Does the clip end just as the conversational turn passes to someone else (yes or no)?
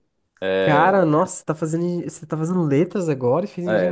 yes